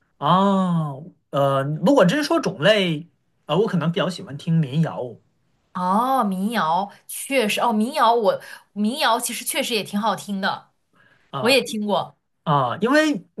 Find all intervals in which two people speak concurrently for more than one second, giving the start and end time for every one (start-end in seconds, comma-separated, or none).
none